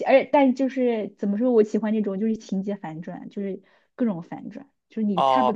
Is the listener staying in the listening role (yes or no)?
no